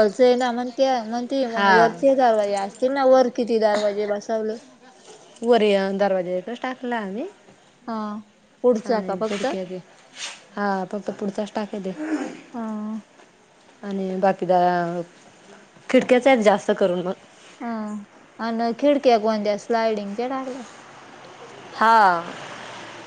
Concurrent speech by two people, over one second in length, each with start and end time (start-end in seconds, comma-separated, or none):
none